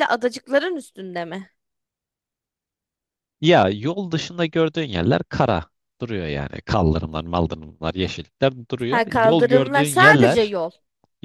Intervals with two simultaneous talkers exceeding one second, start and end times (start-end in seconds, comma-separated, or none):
8.9-10.5